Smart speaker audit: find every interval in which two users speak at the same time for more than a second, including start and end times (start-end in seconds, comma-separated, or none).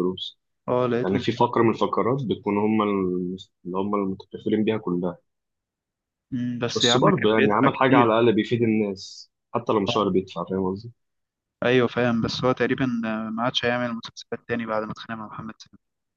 6.8-8.1